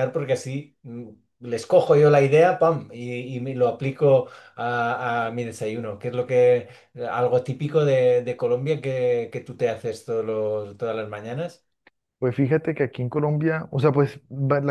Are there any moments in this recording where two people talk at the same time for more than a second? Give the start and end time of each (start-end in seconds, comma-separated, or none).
none